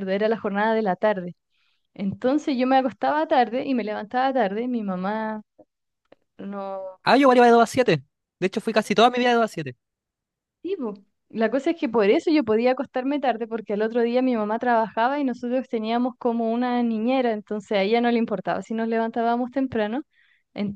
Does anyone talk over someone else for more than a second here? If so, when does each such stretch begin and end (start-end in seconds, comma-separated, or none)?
none